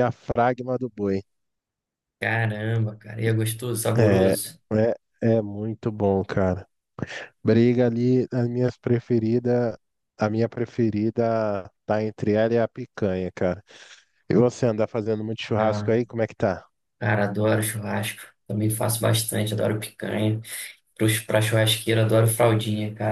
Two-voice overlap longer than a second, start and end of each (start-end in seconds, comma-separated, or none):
none